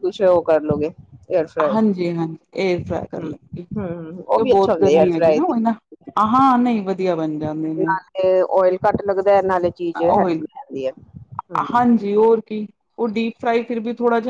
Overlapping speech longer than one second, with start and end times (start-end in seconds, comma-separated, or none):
3.8-5.5